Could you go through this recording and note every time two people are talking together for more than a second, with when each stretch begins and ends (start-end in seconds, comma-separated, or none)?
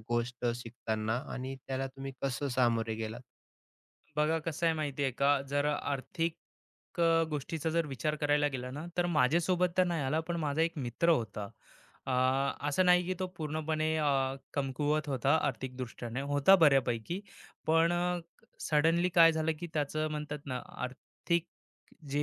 none